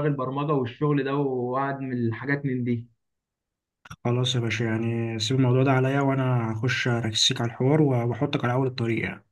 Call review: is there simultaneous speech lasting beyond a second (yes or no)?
no